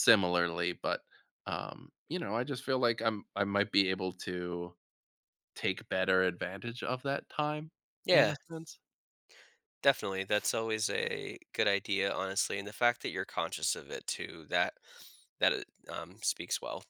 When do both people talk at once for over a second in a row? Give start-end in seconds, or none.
none